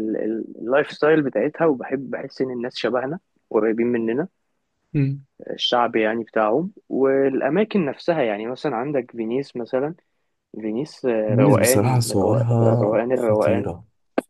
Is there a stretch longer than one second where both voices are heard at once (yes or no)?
yes